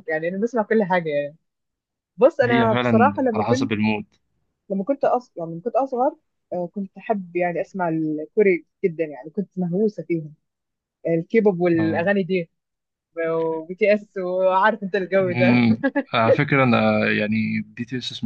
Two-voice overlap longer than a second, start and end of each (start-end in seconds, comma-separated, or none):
2.4-3.7